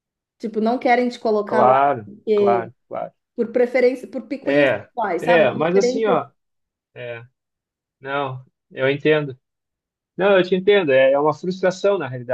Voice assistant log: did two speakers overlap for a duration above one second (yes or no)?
yes